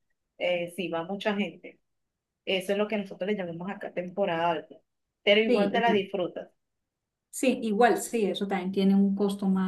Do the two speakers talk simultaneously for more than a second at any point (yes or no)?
no